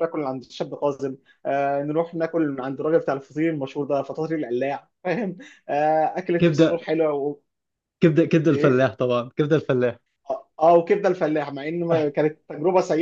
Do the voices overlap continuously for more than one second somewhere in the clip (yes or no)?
no